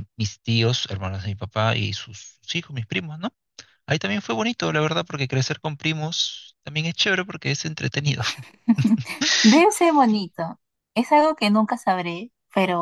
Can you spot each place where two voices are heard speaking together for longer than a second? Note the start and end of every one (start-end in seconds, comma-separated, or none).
none